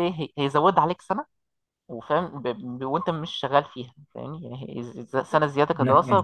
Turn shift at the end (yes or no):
no